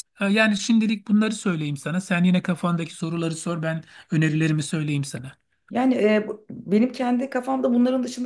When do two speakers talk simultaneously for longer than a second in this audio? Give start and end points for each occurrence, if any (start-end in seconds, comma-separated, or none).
none